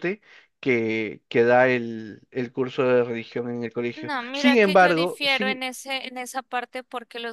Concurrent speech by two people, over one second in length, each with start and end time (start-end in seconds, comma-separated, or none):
4.0-5.6